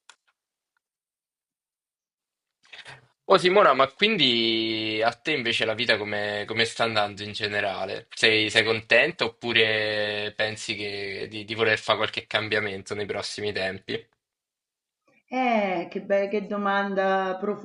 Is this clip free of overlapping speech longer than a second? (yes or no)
yes